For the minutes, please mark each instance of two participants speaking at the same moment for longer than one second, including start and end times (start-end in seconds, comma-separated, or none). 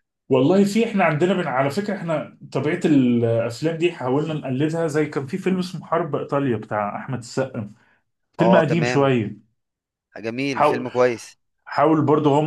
none